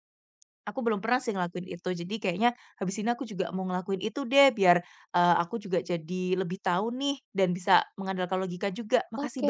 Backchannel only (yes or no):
no